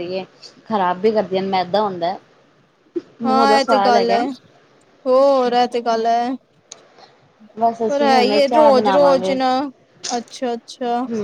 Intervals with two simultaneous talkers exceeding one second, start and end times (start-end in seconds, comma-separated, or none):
7.9-9.3